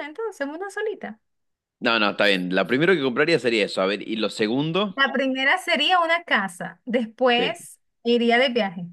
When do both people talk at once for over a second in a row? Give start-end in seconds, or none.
none